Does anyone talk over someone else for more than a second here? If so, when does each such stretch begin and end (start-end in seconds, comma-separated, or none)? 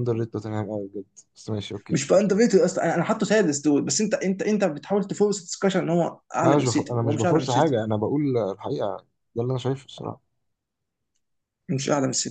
6.4-7.8